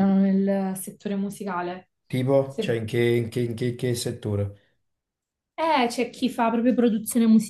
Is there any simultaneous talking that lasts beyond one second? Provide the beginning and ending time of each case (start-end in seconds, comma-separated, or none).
none